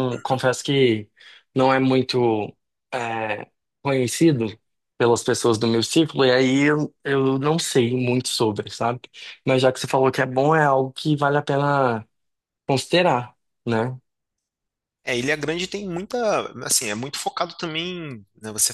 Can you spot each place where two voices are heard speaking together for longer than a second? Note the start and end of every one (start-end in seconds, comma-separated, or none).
none